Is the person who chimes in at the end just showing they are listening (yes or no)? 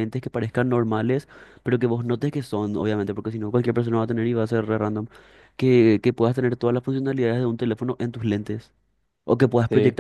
yes